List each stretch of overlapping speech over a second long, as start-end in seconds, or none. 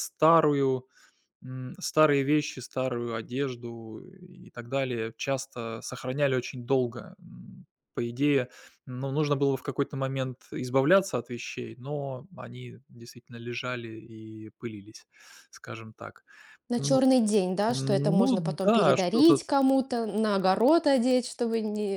17.7-19.4